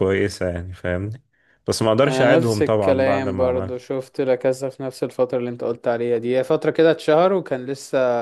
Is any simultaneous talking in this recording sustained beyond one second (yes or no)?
yes